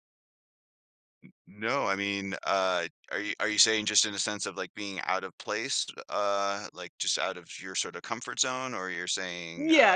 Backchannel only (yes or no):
no